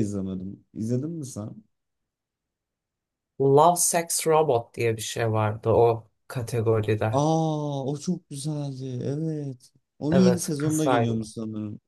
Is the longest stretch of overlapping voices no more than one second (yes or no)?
no